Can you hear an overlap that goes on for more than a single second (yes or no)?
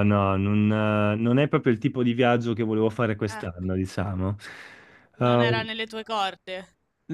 no